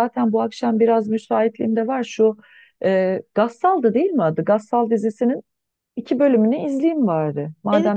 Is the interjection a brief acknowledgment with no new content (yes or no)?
no